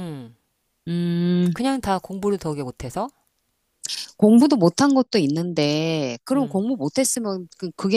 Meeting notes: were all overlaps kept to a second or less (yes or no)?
yes